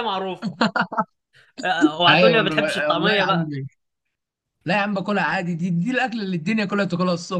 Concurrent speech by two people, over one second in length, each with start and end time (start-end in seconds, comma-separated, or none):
2.1-3.5